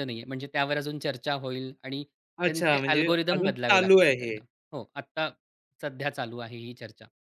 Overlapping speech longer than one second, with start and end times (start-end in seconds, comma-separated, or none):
2.4-4.4